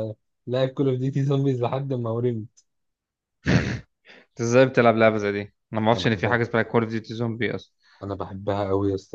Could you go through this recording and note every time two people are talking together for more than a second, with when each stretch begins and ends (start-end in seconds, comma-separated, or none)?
none